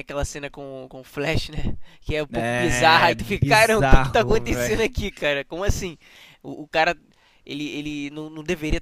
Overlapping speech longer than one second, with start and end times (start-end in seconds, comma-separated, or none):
2.3-4.9